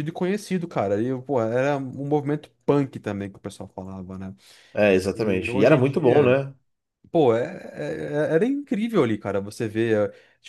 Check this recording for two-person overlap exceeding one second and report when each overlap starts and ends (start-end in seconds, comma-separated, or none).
5.1-6.4